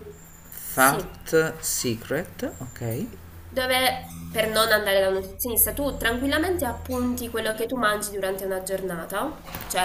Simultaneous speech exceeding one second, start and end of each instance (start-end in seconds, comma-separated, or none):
none